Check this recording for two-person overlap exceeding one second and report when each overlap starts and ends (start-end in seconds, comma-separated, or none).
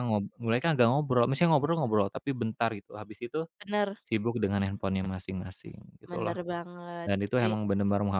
none